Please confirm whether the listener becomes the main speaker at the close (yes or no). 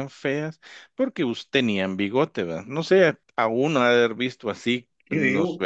no